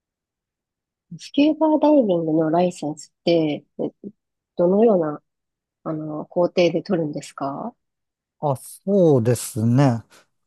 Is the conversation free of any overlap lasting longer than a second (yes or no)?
yes